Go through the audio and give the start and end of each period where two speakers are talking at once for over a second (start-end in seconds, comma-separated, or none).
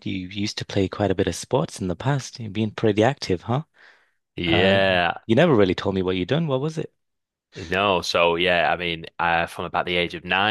none